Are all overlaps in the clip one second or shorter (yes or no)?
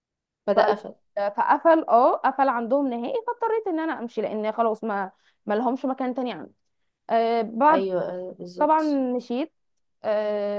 yes